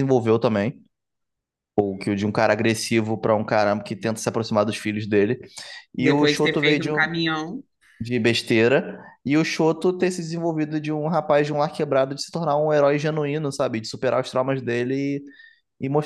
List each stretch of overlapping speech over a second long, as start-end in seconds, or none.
6.0-7.2